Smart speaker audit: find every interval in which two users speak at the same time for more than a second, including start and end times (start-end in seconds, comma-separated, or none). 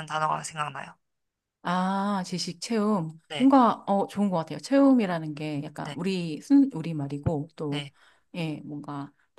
none